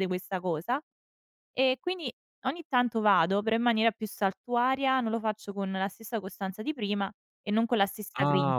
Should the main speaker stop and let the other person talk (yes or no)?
yes